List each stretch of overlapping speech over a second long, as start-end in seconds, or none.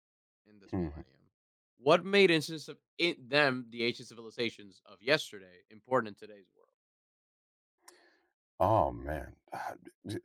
none